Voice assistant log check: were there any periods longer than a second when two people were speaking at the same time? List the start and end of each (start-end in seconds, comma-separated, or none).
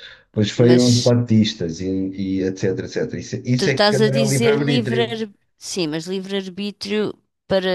3.6-5.2